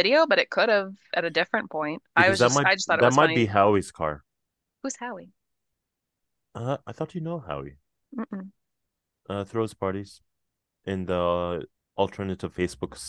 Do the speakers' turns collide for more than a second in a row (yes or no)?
yes